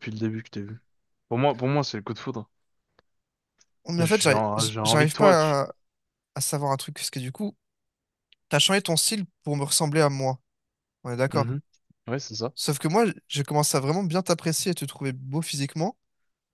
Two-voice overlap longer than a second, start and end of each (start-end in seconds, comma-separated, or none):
4.0-5.5